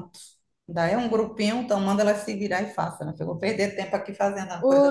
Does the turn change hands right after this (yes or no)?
yes